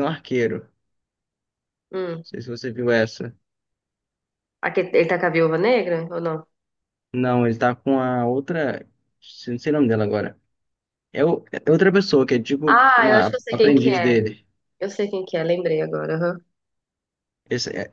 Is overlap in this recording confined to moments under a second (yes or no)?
no